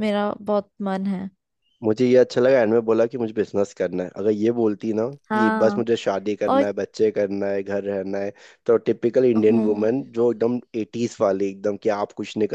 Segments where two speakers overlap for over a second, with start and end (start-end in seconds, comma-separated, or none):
none